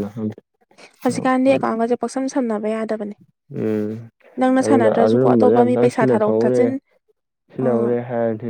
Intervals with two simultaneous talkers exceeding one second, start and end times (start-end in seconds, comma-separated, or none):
4.7-6.6